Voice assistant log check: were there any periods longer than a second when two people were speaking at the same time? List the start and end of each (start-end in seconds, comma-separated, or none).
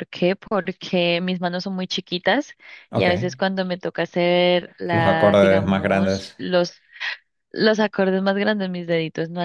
4.9-6.4